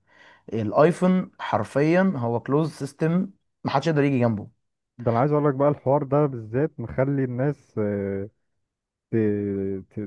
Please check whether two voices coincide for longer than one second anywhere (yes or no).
no